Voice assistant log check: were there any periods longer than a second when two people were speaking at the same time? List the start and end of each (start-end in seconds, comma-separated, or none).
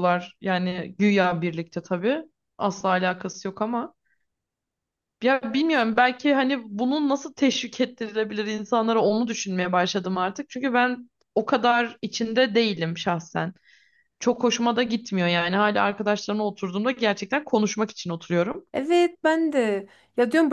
none